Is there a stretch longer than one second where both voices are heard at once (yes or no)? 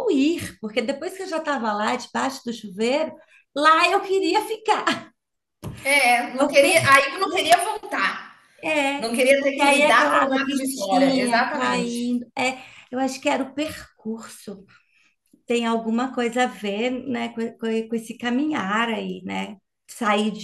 yes